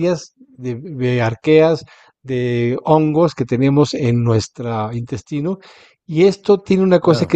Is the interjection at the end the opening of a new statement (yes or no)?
no